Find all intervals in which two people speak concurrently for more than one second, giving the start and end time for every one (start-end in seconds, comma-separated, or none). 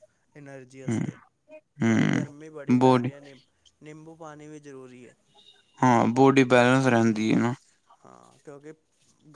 1.8-3.1